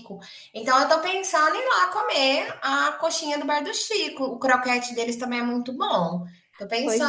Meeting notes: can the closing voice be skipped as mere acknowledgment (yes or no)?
no